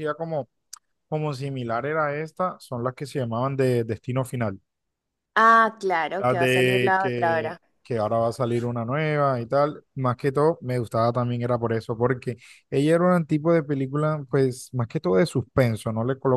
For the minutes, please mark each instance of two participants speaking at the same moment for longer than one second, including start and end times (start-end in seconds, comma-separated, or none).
6.2-7.6